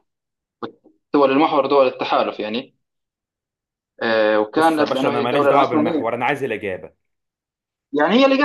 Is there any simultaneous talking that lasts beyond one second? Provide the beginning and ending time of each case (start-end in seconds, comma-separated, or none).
4.6-6.1